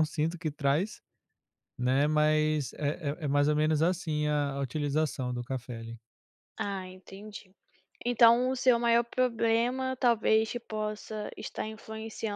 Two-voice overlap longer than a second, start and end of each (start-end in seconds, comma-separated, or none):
none